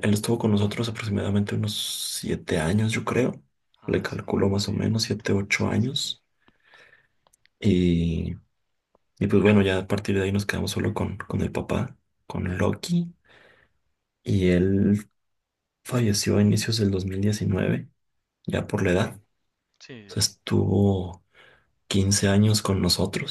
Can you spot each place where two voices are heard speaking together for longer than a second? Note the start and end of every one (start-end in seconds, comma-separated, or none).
3.9-6.2